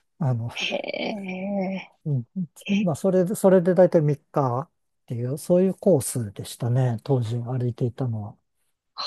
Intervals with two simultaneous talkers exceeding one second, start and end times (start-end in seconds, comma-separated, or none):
none